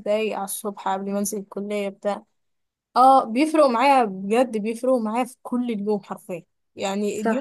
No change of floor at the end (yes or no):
yes